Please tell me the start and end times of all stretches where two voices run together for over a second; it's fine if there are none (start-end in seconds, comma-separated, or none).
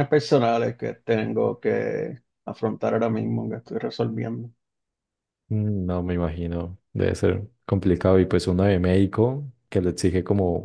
none